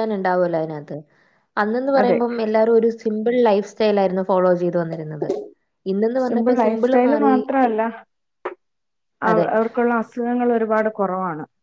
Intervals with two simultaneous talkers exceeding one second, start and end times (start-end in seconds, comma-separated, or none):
none